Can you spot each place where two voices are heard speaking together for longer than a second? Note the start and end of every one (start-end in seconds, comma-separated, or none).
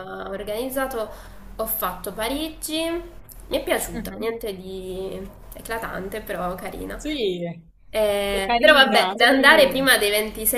8.3-9.8